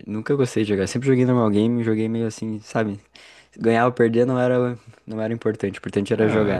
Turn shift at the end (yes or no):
yes